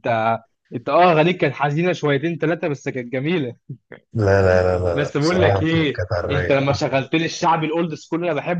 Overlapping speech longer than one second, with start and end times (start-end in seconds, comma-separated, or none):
4.9-6.6